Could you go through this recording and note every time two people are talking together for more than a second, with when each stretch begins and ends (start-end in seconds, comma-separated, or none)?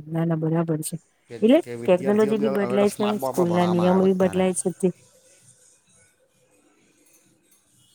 1.3-4.4